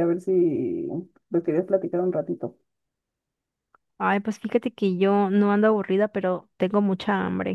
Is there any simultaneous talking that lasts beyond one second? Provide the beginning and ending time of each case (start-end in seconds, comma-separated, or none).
none